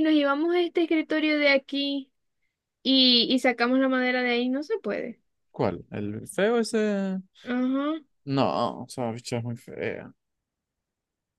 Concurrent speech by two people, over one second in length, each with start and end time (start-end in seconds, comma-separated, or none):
none